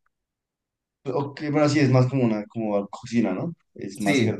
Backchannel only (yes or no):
no